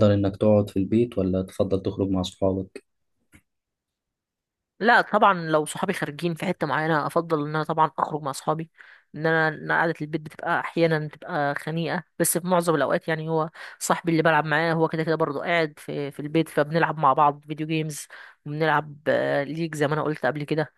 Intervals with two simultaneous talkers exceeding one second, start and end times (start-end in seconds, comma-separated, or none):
none